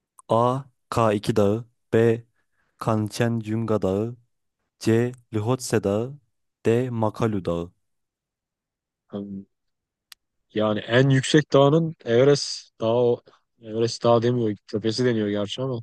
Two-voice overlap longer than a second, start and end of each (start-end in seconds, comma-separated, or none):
none